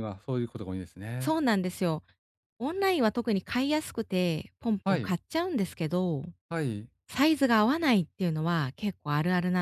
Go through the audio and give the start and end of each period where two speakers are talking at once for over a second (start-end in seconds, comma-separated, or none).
none